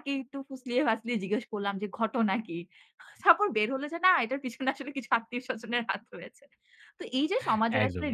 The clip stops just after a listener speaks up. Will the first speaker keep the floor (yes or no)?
yes